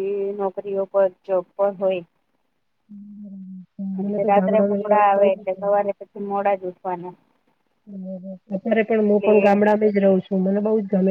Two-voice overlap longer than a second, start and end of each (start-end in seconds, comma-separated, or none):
3.9-5.8